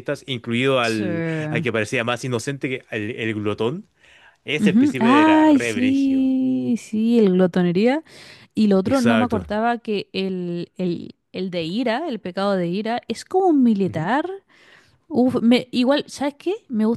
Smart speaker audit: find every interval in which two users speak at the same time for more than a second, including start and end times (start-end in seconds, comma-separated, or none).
4.6-6.3